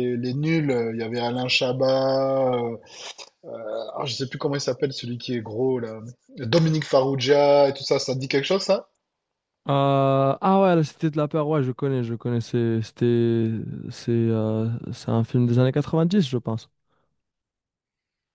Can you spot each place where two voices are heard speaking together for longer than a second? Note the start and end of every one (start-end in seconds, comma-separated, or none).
none